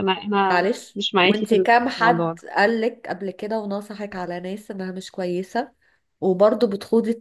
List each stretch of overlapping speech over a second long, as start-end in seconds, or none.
0.5-2.4